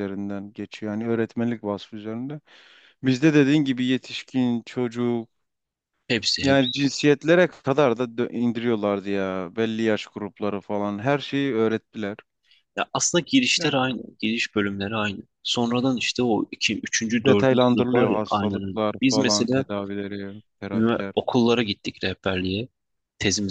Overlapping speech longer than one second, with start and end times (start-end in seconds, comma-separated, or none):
17.2-19.6